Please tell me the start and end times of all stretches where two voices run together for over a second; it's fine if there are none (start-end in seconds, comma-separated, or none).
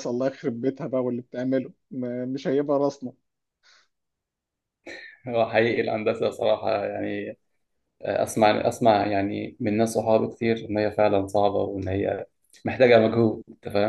none